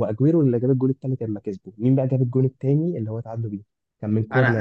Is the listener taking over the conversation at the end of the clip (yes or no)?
yes